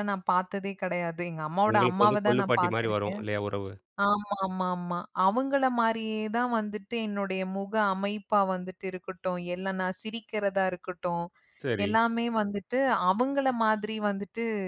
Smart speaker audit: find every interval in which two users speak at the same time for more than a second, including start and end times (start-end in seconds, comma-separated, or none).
1.7-3.2